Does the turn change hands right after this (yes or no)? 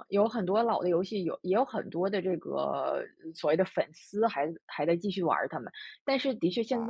no